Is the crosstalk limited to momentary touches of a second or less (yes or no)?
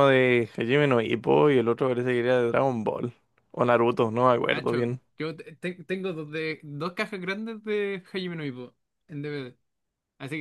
yes